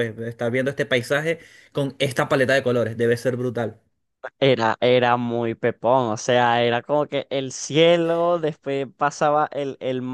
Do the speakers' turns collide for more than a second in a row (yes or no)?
no